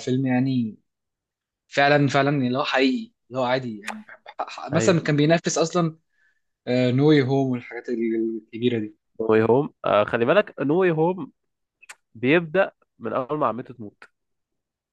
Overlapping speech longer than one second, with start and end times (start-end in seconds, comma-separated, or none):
none